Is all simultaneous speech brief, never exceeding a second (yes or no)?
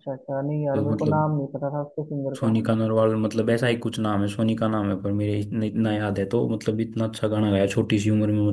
yes